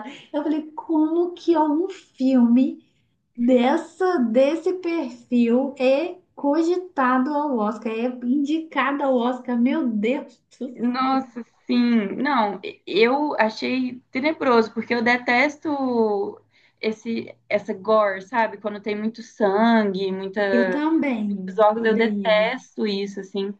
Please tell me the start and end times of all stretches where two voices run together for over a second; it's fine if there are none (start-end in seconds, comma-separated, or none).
21.3-22.5